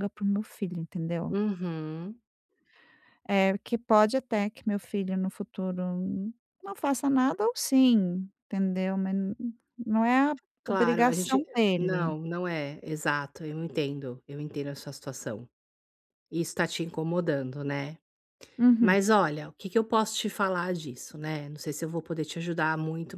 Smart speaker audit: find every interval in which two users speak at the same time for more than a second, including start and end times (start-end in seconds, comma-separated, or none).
10.6-12.2